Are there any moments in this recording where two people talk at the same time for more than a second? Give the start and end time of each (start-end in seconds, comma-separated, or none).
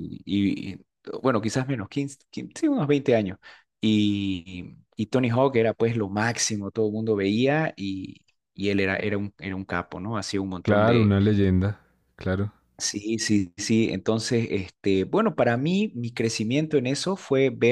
none